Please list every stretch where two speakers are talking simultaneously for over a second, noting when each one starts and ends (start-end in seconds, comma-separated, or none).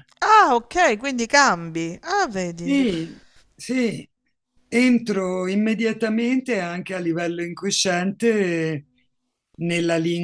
none